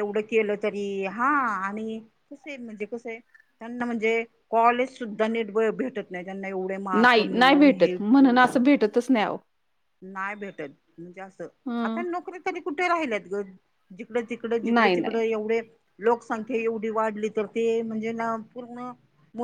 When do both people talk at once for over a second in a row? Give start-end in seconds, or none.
7.0-8.5